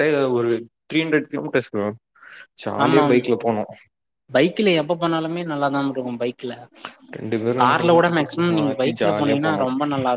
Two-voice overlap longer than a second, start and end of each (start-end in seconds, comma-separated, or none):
7.6-9.6